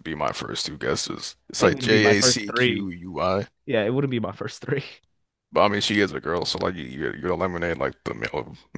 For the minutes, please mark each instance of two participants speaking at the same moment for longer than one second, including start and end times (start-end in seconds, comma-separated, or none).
1.6-2.9